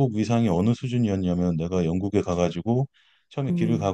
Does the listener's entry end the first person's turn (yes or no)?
no